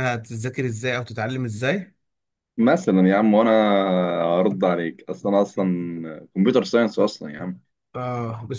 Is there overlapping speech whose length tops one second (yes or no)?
no